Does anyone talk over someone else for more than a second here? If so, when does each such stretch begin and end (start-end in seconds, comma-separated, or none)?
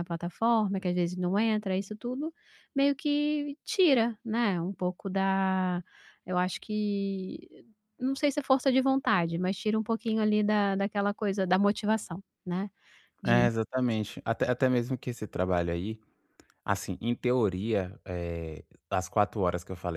none